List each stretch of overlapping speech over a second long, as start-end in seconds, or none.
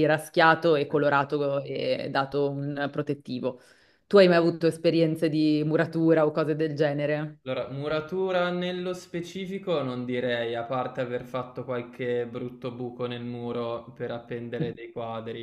none